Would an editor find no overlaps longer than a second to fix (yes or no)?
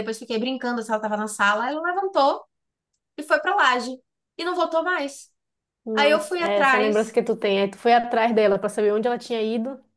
no